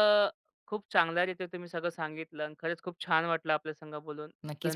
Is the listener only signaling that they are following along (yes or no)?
no